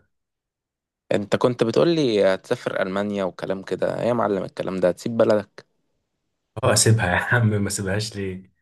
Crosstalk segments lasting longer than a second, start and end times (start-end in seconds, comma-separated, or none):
none